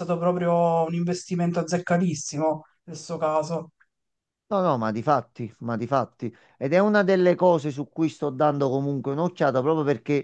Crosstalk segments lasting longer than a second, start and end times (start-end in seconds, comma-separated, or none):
none